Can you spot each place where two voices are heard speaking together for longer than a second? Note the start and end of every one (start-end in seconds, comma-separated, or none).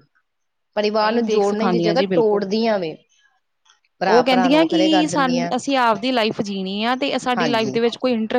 1.0-2.4, 4.1-5.5